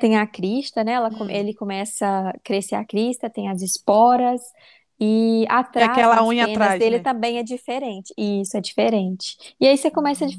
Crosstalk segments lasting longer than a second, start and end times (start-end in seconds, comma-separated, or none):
5.7-7.0